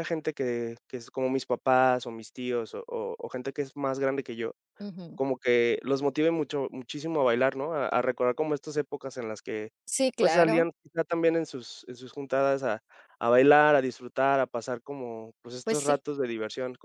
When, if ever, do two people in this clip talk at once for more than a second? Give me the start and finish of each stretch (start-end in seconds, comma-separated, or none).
none